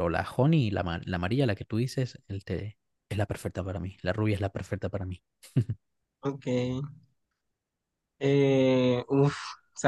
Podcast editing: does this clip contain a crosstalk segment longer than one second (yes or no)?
no